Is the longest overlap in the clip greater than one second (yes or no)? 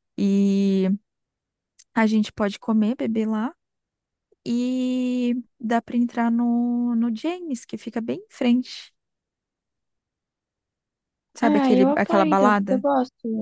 yes